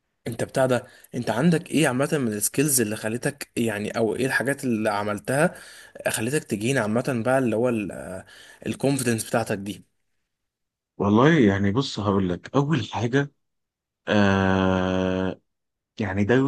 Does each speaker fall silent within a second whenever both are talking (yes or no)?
yes